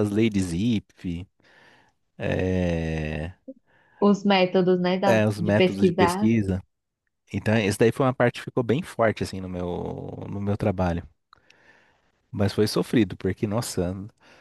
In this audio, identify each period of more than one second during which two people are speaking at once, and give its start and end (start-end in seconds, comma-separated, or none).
5.1-6.3